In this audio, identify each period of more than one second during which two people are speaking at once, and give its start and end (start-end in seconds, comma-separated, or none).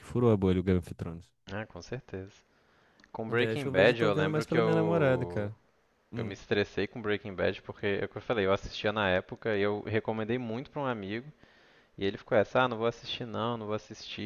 3.3-5.5